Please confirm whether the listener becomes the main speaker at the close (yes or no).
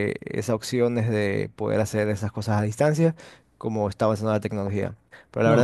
no